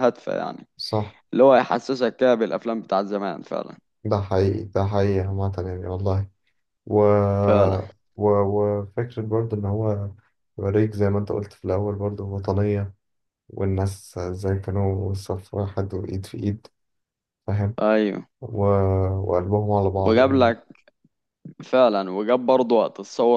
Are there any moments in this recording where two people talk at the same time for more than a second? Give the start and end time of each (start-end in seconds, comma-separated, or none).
none